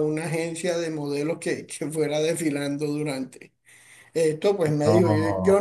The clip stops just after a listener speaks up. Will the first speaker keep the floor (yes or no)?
yes